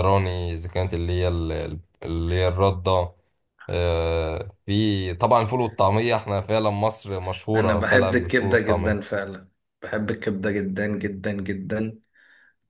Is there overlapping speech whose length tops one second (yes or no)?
yes